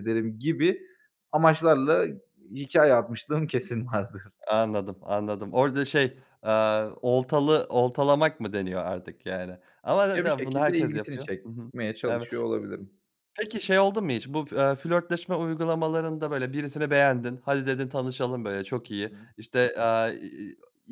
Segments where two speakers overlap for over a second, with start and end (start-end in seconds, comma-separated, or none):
10.1-12.3